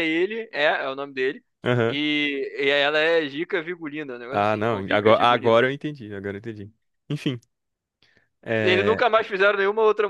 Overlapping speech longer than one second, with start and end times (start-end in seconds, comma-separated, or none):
4.3-5.7